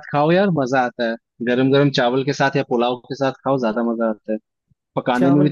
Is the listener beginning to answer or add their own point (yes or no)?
no